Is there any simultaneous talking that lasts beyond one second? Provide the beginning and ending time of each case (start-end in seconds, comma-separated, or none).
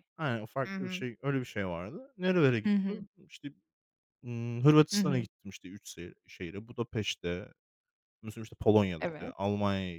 none